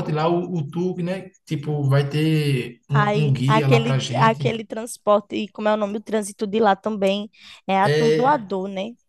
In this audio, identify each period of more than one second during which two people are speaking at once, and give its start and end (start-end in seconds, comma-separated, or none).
3.0-4.4